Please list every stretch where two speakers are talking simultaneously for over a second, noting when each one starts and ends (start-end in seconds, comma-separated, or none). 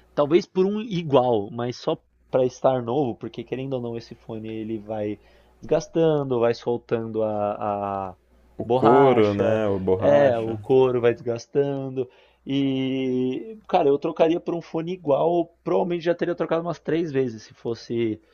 8.6-10.6